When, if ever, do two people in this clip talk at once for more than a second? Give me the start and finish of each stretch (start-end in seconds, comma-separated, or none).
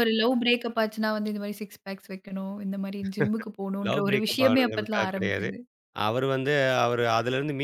3.9-5.5